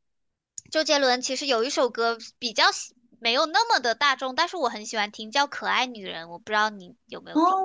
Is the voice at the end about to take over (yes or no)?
yes